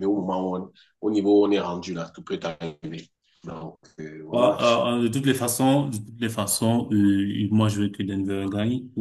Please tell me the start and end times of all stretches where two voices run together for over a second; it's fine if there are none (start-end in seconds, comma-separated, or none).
none